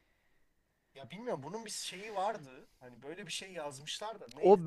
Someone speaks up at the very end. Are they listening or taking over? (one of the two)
taking over